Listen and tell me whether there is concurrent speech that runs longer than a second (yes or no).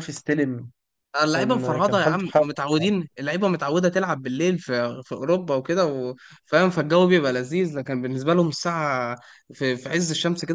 yes